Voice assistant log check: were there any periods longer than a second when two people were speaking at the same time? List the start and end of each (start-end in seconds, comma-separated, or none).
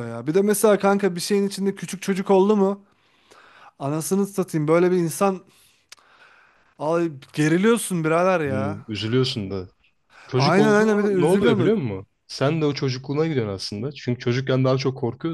10.3-11.9